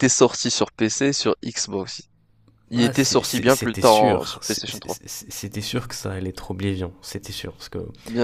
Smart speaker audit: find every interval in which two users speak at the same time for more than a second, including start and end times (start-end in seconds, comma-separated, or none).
2.7-5.0